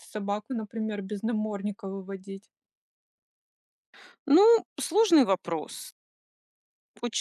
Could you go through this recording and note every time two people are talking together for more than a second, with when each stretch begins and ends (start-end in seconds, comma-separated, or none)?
none